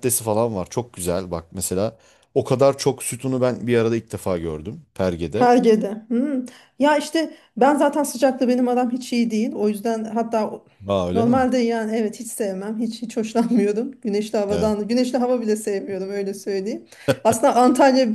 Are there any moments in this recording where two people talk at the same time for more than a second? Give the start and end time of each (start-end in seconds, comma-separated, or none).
none